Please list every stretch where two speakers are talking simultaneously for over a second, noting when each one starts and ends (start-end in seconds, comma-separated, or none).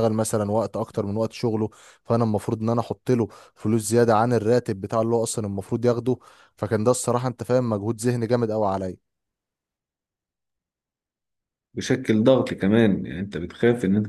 none